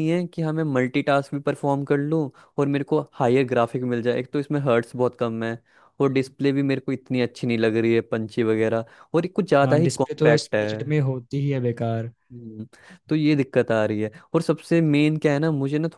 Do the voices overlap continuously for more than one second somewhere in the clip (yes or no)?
yes